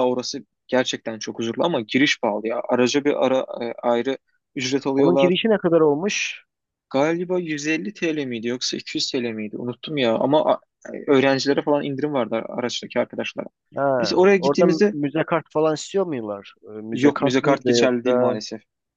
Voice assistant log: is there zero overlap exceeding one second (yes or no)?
no